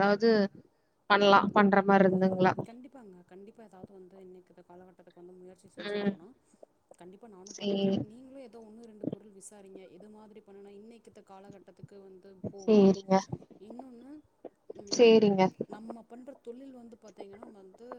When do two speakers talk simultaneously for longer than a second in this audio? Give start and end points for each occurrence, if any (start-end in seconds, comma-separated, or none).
none